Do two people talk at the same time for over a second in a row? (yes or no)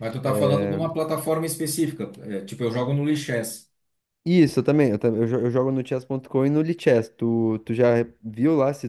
no